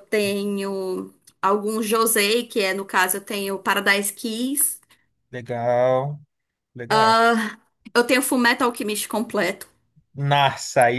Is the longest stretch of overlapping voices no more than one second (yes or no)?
yes